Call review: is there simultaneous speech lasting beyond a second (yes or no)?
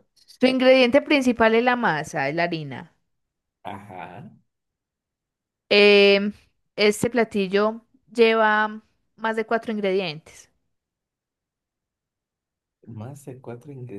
no